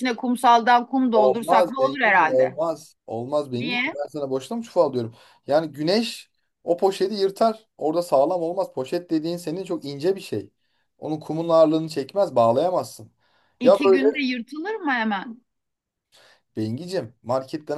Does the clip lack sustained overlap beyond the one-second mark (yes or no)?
no